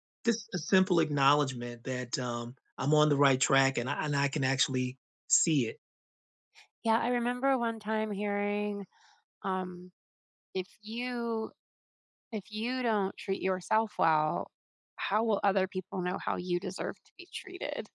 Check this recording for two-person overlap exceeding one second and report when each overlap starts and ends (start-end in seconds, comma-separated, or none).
none